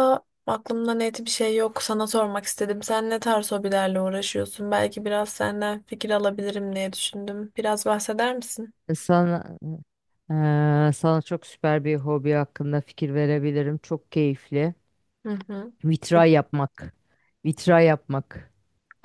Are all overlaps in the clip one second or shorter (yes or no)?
yes